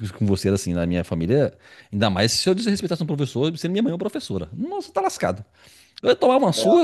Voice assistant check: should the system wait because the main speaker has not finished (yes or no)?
yes